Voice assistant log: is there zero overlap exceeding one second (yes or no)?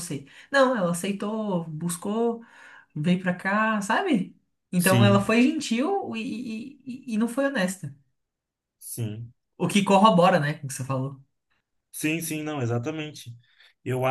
yes